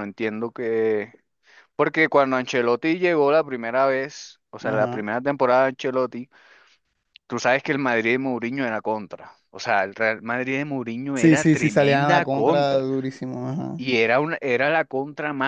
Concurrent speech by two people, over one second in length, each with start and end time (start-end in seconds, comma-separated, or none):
11.1-12.8